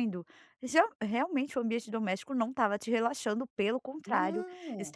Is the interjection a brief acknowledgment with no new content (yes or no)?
yes